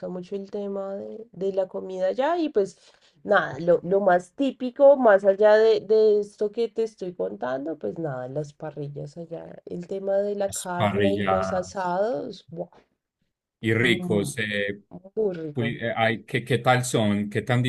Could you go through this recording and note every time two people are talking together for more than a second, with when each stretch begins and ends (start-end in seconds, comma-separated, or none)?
10.5-12.0